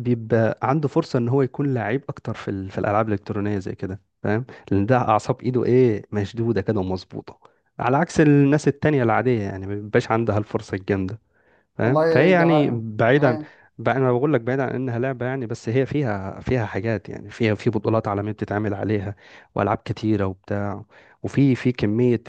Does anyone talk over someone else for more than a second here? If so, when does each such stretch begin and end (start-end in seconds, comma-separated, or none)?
11.8-13.4